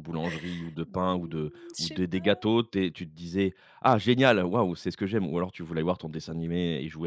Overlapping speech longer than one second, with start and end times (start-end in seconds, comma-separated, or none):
0.9-2.5